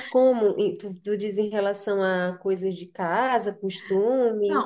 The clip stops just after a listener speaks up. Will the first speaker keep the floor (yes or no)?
no